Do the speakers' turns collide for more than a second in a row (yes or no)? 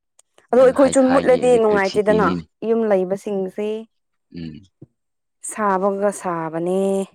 yes